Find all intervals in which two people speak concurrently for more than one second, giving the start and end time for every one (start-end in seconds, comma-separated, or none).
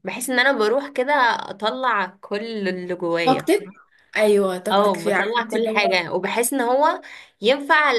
4.7-6.0